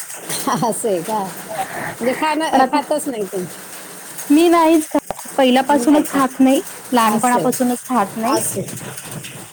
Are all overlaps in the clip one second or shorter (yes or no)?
yes